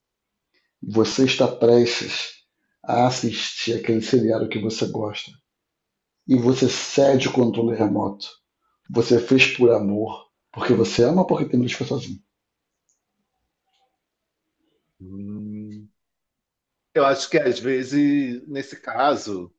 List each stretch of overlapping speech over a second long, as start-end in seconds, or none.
none